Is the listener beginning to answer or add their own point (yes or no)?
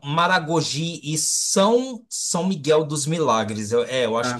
no